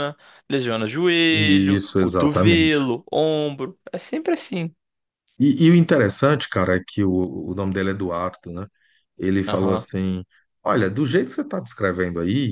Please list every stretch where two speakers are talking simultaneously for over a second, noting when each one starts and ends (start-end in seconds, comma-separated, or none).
1.3-2.8